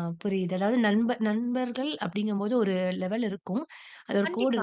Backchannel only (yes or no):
yes